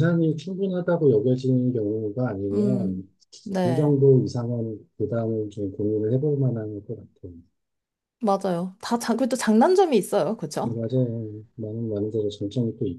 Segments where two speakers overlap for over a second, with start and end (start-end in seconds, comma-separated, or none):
none